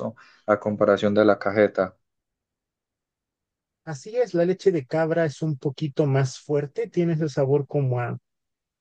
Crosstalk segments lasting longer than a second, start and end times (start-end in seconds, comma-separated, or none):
none